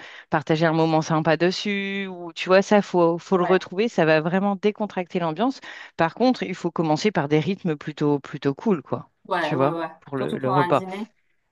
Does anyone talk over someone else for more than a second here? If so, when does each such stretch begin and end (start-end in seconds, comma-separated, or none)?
9.3-10.8